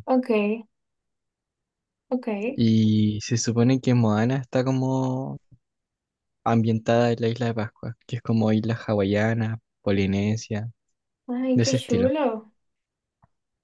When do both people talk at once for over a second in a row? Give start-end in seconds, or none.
none